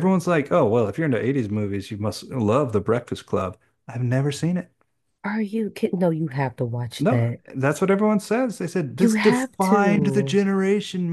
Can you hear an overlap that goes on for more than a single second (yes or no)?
yes